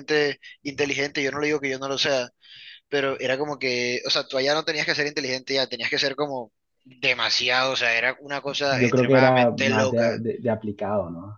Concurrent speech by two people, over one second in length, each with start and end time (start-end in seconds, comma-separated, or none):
8.7-10.2